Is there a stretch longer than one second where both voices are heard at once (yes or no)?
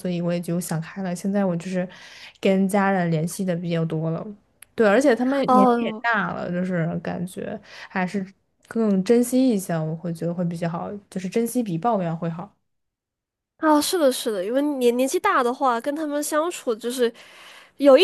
no